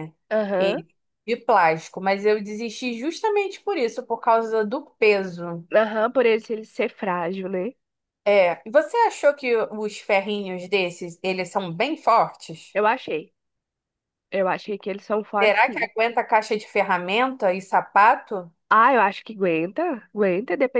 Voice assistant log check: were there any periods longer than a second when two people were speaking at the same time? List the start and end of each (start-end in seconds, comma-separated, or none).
none